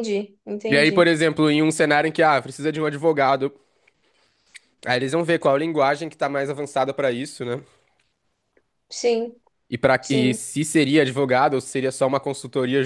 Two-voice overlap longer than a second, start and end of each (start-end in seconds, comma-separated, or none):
none